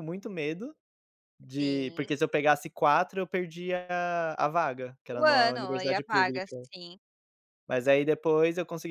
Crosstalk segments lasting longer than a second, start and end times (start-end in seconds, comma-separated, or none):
5.1-6.5